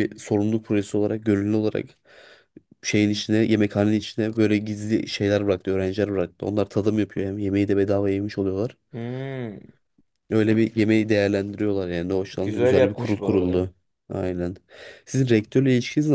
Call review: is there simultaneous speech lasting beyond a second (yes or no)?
yes